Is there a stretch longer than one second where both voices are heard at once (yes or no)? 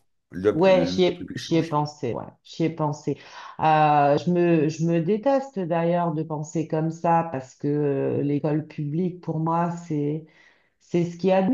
yes